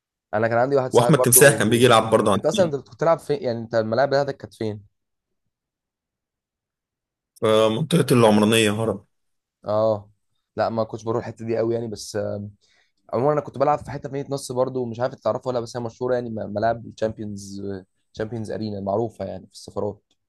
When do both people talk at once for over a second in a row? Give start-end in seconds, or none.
0.9-2.7